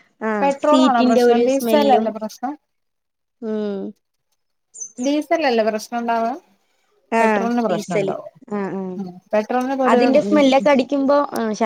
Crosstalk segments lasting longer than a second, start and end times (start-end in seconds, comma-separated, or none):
0.7-2.1